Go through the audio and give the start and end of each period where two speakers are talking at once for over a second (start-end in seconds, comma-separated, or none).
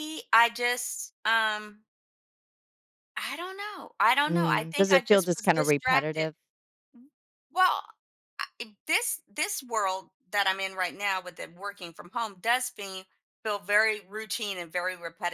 4.3-6.3